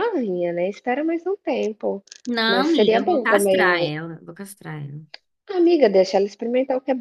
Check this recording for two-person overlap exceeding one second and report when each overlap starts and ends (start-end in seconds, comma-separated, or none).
2.5-3.9